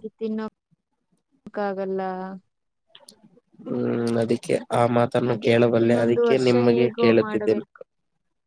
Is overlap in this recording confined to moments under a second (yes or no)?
no